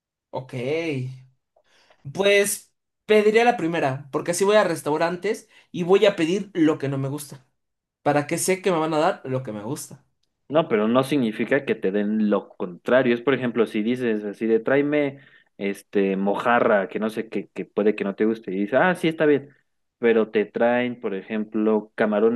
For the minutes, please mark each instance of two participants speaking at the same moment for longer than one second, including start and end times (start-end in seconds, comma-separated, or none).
none